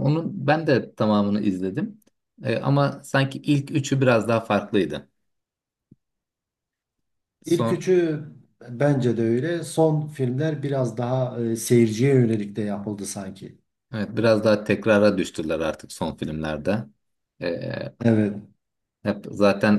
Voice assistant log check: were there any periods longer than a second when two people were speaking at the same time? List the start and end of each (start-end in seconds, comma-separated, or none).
none